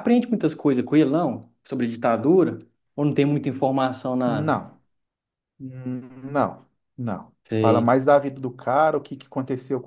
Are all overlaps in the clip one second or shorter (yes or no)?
yes